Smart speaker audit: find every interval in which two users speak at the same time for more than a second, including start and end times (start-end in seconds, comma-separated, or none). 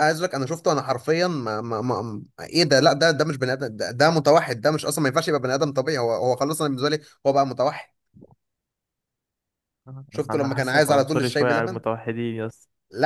10.3-11.8